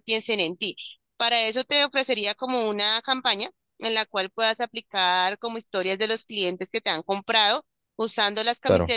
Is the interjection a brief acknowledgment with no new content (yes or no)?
yes